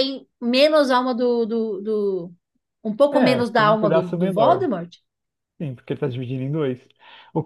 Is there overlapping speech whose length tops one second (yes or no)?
yes